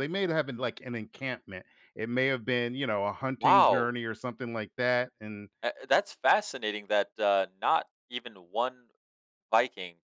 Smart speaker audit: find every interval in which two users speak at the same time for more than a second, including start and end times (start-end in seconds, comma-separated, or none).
none